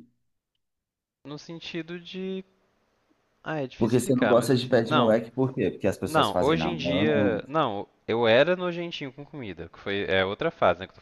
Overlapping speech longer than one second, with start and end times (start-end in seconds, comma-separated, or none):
3.8-5.2, 6.1-7.4